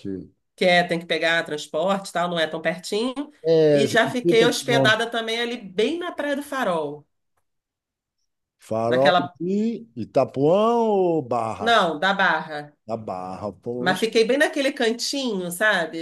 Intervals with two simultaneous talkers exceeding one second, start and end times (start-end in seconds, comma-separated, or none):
3.7-5.0